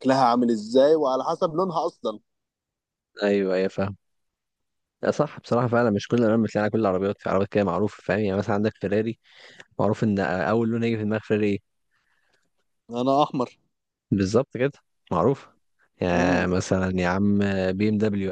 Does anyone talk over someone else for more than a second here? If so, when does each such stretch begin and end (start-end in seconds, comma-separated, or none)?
none